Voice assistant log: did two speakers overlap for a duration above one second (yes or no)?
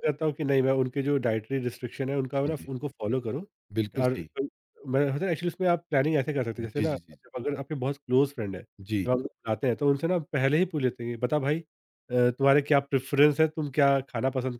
no